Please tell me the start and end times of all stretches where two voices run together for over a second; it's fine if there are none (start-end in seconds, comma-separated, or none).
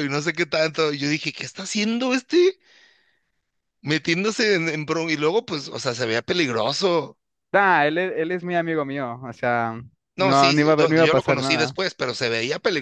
10.2-11.8